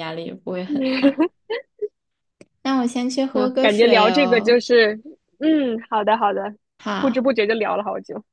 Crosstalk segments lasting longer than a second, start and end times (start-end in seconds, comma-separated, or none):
3.3-4.6